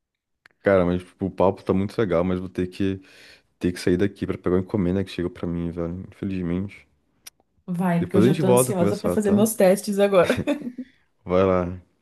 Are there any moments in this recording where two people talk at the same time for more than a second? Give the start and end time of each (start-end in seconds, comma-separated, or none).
8.0-9.4